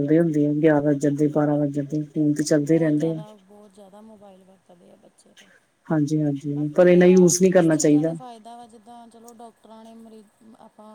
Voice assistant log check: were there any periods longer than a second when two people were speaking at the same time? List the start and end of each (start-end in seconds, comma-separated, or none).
6.5-8.1